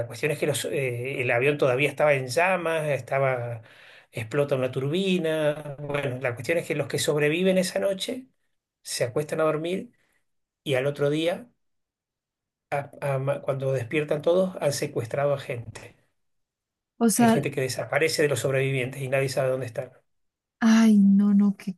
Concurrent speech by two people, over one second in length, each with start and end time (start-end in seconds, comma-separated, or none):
none